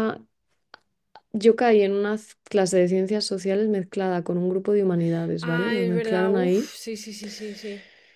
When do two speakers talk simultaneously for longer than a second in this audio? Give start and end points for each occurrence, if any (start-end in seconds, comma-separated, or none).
5.4-6.7